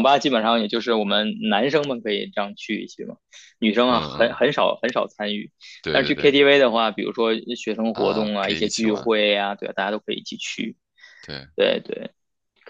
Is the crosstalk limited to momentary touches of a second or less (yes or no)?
no